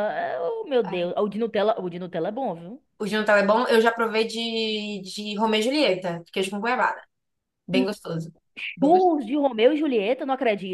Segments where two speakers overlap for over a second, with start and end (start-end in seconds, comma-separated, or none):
none